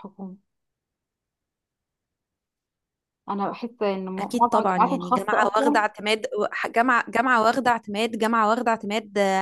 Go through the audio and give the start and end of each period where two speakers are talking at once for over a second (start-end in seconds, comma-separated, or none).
4.2-5.8